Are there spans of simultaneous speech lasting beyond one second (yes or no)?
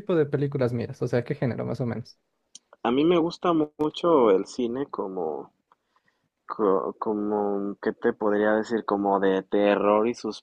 no